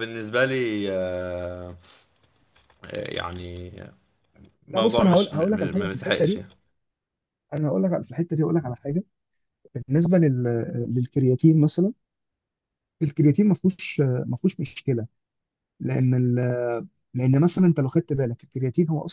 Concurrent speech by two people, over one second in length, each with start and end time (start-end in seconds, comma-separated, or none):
4.7-6.4